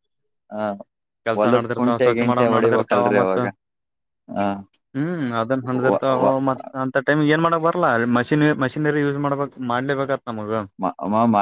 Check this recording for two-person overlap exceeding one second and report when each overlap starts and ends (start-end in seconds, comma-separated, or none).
1.4-3.4